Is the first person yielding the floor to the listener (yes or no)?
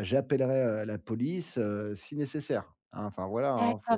yes